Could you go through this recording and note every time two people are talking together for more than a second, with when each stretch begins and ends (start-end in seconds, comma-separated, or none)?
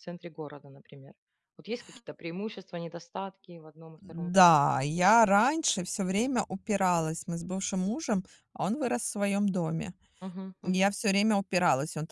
none